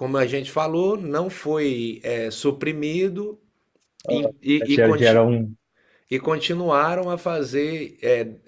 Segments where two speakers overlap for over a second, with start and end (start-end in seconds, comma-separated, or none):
4.1-5.3